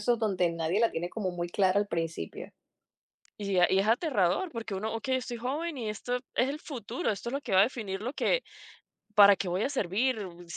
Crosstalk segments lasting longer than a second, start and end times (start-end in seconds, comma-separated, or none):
none